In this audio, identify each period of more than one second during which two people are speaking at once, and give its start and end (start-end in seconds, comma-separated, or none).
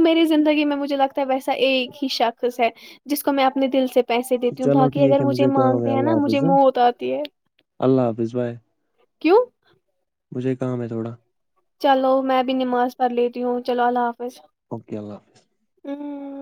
4.6-6.4